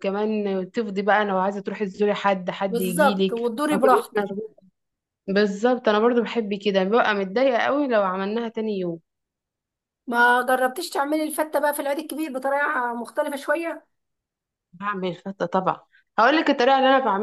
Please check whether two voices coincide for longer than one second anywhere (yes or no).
yes